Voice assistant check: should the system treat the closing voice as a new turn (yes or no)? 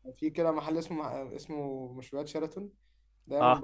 no